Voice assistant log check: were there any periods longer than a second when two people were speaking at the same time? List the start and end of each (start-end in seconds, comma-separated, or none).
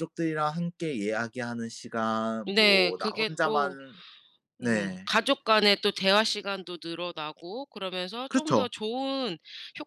2.5-3.8